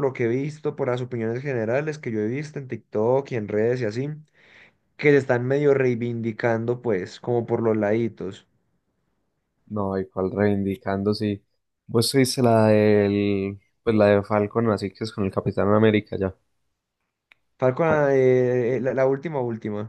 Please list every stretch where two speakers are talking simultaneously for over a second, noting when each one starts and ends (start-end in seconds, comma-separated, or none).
none